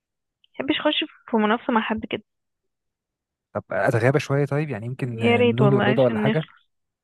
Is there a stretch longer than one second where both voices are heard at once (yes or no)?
yes